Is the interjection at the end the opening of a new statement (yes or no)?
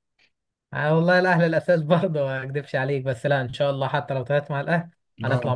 no